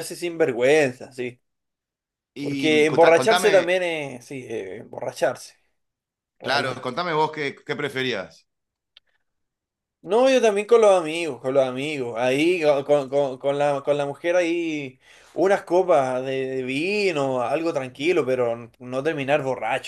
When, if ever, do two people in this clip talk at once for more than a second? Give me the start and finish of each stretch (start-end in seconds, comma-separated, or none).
2.4-3.7